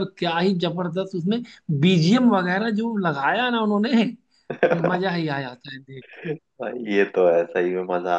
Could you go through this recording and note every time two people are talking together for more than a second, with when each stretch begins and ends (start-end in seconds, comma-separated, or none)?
none